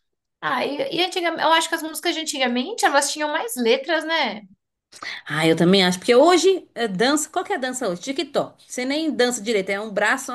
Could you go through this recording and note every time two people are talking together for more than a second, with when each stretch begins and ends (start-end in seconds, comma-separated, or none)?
none